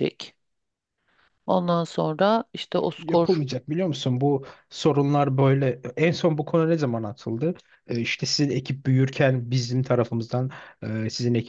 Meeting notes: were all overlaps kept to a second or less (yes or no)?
yes